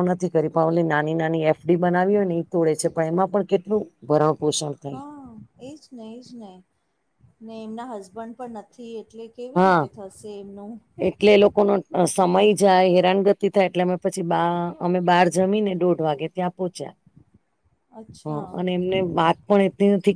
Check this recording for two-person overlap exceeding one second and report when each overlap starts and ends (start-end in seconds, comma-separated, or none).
none